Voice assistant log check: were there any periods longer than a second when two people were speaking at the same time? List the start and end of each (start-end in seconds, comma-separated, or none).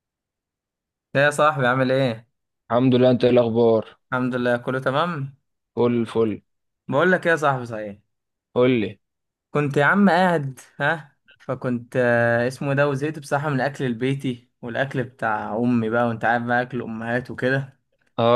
none